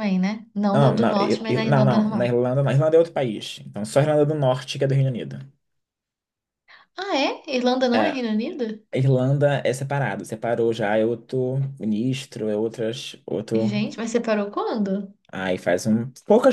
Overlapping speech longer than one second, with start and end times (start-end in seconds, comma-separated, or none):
0.7-2.4